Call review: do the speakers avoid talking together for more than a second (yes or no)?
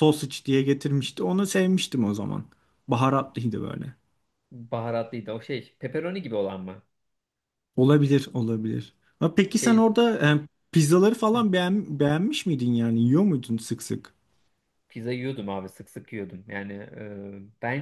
yes